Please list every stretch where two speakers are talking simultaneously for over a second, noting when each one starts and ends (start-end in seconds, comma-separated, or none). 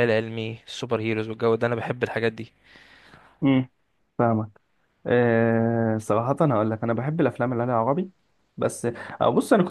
none